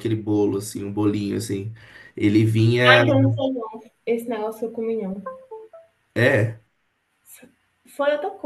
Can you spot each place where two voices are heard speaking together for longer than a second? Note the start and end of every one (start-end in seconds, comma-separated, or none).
none